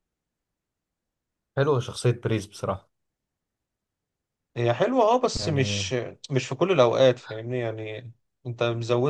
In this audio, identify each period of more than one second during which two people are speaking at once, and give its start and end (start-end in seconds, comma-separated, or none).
none